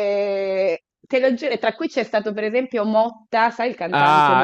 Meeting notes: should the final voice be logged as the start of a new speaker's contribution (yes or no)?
yes